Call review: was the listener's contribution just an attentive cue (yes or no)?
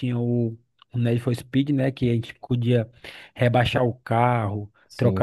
yes